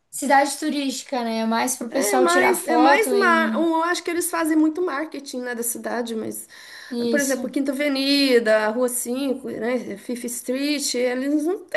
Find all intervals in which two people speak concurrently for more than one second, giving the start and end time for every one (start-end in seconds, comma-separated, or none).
1.9-3.7